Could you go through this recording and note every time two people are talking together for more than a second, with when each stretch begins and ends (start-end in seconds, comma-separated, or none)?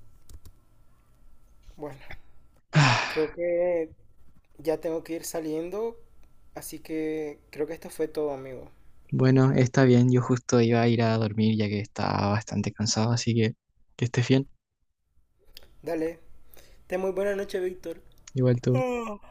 none